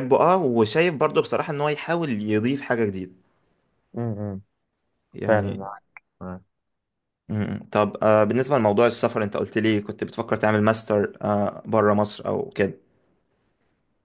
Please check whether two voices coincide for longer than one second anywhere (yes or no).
no